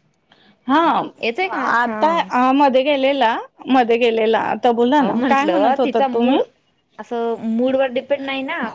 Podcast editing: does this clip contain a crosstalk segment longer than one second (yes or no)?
yes